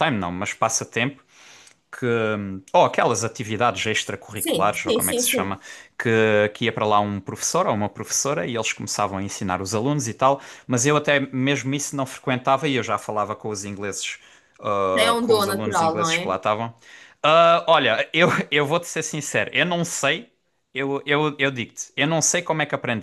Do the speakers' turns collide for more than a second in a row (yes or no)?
yes